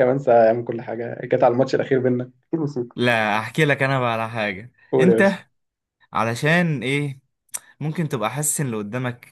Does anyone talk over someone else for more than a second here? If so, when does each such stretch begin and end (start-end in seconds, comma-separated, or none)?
none